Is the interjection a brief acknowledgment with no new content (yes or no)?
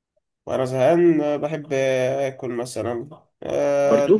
yes